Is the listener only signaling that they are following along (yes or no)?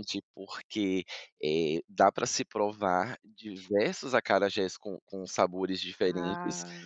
yes